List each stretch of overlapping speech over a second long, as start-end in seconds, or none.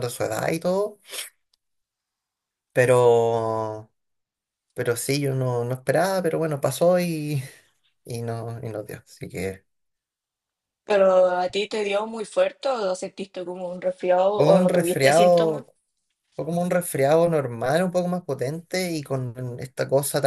14.4-15.6